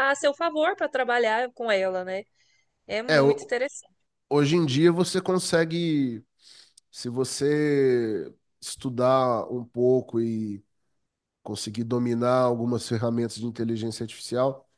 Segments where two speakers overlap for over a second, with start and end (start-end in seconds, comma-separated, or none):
none